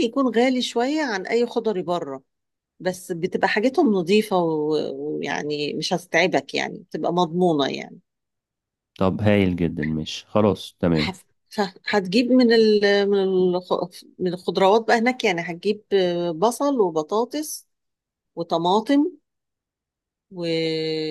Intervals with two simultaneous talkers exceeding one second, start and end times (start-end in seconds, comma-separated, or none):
none